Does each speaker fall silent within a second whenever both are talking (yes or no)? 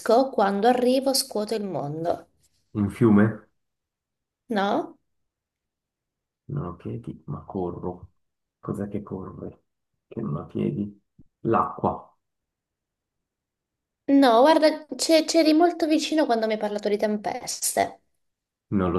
yes